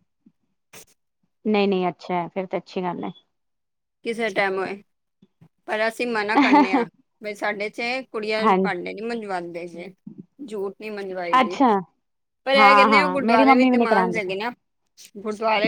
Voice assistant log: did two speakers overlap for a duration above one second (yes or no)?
yes